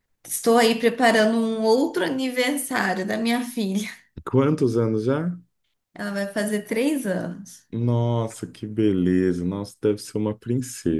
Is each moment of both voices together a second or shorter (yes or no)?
yes